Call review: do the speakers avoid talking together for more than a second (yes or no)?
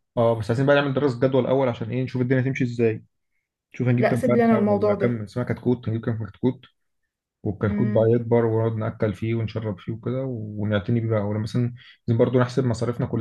no